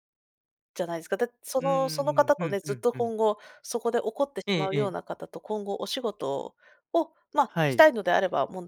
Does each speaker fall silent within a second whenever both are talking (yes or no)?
no